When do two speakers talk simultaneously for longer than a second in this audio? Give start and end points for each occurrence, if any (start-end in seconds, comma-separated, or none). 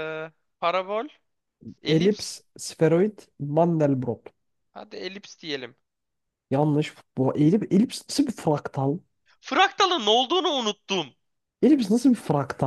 none